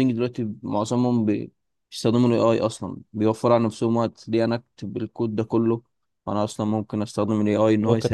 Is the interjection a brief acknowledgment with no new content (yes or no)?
no